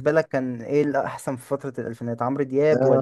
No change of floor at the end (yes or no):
no